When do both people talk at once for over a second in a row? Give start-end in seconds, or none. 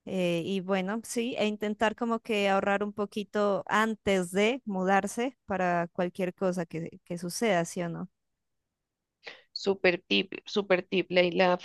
none